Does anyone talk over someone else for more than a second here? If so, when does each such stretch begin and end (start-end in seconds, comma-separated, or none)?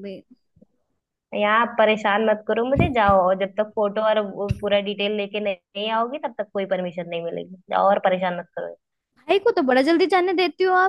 none